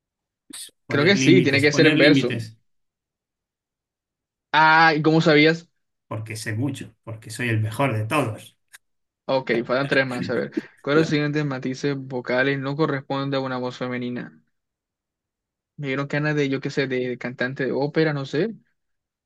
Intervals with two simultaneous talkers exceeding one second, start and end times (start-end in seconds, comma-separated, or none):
0.9-2.3